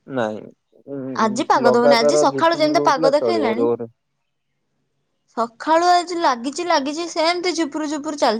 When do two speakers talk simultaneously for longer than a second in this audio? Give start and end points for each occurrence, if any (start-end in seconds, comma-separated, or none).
1.7-3.7